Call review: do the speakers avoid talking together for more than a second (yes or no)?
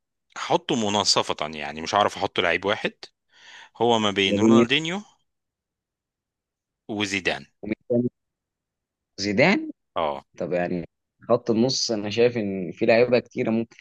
yes